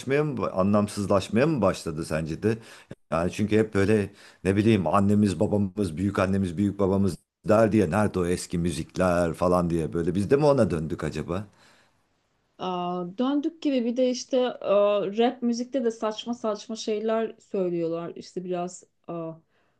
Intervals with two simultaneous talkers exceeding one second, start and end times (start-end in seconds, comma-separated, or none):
none